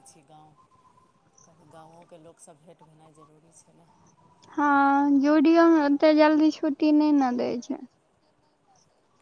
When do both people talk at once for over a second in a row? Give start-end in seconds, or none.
none